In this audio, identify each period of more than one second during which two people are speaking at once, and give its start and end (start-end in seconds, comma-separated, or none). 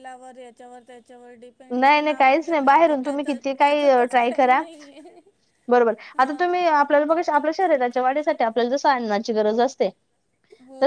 1.8-4.6